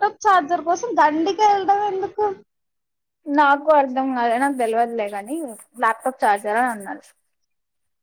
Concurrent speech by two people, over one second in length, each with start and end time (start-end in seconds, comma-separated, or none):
none